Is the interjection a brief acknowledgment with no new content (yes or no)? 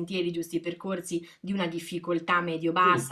yes